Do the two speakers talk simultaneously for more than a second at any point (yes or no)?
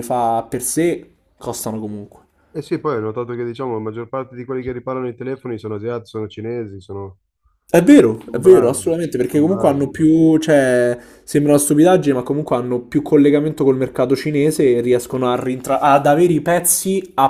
yes